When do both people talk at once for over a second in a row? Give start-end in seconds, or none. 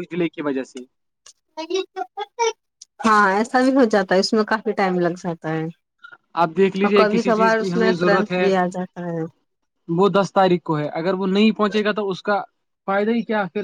6.8-8.5